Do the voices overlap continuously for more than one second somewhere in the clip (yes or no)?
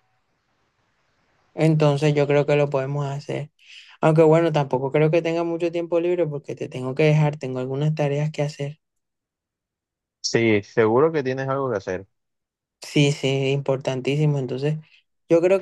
no